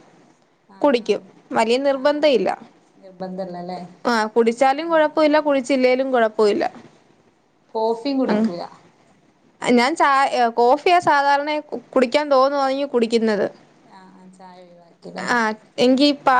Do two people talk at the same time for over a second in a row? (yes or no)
no